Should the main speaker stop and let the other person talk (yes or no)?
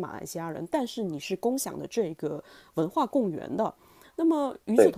no